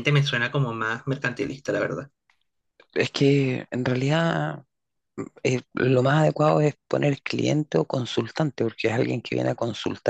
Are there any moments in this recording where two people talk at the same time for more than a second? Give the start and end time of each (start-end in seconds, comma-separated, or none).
none